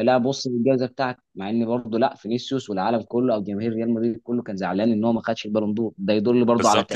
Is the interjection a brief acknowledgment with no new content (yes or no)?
no